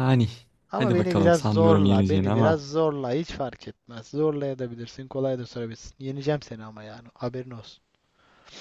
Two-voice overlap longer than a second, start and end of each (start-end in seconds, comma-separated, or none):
0.7-2.6